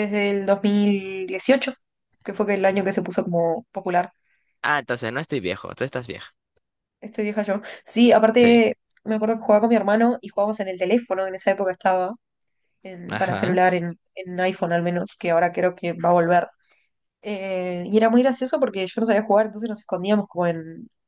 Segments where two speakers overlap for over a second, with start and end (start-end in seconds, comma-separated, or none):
none